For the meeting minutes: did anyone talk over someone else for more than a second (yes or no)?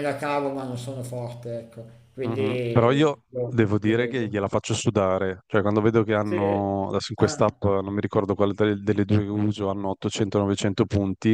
yes